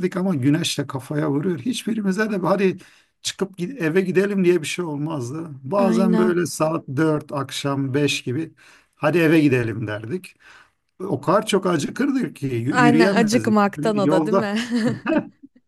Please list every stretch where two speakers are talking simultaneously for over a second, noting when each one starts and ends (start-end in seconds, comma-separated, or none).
12.7-14.5